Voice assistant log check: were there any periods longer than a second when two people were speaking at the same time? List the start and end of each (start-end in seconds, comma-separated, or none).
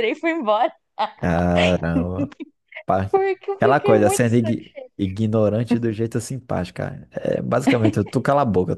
3.6-4.9